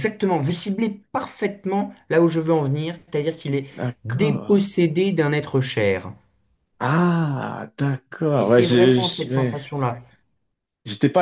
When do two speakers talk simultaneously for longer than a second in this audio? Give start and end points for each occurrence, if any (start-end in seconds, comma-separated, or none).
8.3-9.6